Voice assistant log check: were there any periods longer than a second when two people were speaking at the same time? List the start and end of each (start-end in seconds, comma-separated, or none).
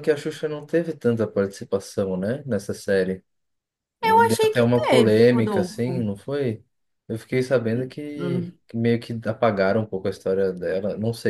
4.0-6.1